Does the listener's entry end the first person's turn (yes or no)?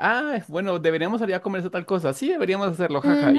yes